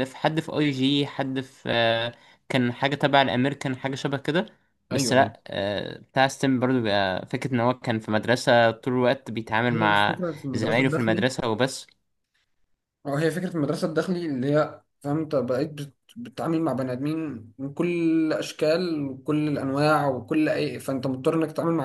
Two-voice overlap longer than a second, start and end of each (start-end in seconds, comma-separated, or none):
9.7-11.3